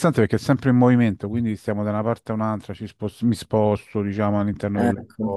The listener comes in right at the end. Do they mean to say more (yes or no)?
no